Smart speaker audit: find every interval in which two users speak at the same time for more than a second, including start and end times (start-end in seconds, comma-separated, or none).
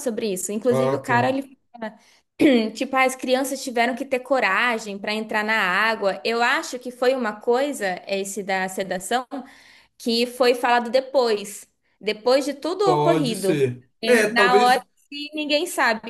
12.8-14.9